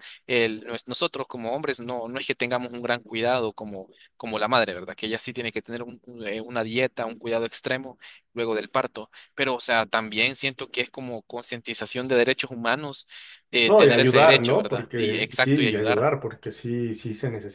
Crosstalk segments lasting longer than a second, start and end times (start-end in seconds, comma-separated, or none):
13.7-16.1